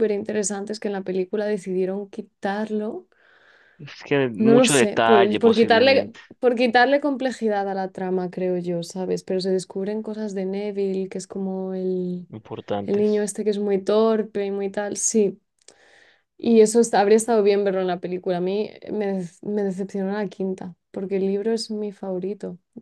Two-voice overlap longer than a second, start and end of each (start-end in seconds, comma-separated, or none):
4.4-6.2